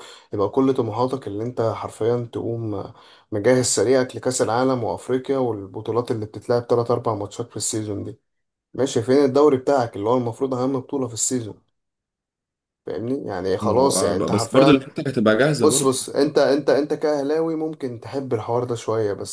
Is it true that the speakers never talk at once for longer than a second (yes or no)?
no